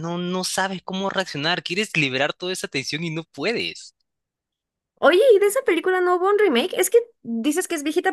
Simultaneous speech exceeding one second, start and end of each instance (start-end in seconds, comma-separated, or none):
none